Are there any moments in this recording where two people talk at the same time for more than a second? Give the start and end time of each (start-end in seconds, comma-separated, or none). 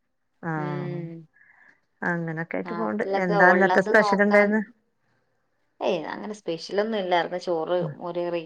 2.7-4.5